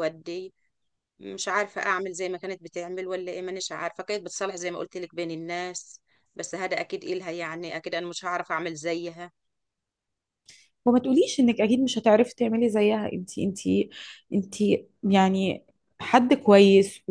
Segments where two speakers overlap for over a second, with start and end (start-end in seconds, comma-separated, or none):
none